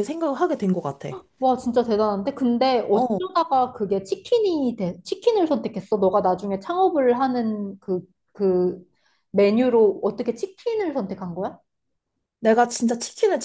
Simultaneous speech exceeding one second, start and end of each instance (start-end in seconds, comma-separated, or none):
none